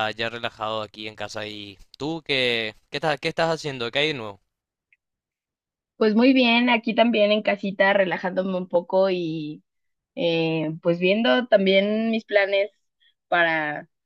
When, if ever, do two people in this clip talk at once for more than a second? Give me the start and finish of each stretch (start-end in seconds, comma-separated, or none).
none